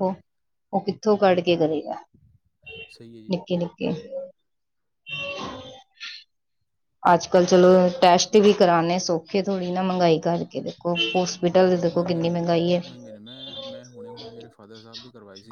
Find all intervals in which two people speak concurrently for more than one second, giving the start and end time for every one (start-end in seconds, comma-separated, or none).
11.5-12.8